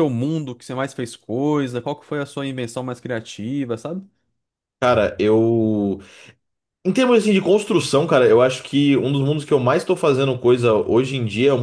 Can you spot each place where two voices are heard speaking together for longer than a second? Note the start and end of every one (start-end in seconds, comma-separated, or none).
none